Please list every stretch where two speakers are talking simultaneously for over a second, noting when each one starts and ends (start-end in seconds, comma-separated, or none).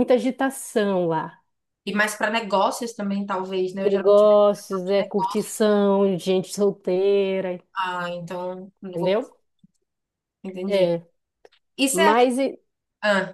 3.8-5.4